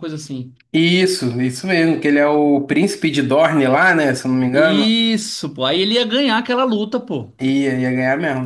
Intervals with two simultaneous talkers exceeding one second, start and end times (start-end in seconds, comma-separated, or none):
none